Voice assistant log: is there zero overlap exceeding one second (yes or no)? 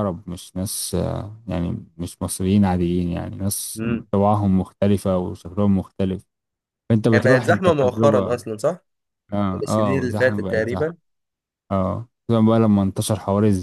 no